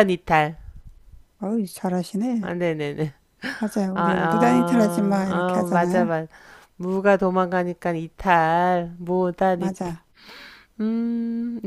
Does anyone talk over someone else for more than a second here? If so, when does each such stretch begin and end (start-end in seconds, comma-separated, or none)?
3.9-6.1